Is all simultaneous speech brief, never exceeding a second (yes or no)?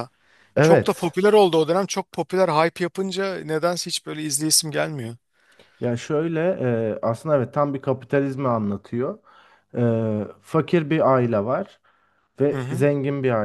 yes